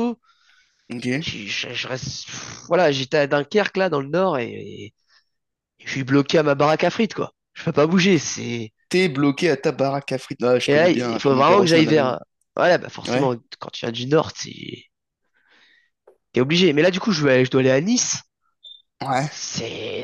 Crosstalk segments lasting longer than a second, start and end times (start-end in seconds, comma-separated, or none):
10.7-12.2